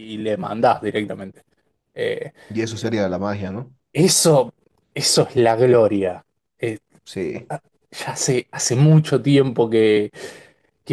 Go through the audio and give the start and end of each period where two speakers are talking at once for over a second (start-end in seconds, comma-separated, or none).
none